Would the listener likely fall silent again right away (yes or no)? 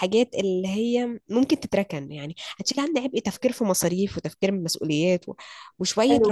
no